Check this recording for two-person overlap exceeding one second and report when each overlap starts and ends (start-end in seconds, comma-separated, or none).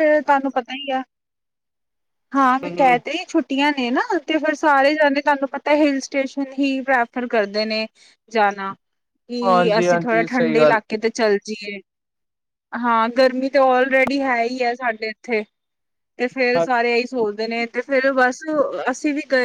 9.5-10.8